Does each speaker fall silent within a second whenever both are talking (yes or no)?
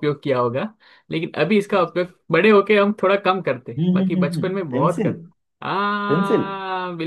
no